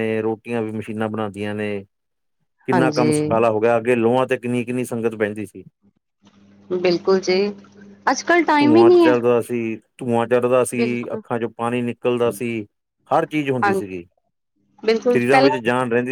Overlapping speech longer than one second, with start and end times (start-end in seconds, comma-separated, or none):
none